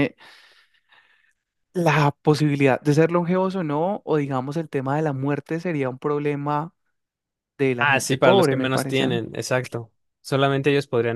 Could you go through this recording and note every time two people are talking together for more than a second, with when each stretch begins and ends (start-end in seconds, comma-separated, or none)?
7.8-9.0